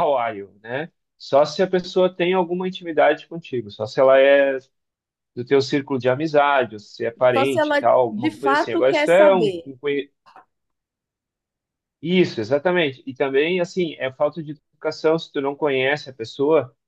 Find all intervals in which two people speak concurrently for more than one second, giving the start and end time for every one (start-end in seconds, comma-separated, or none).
7.3-9.5